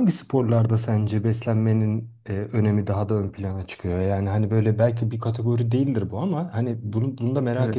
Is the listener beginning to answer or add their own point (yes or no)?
no